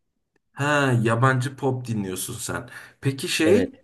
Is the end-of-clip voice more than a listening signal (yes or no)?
no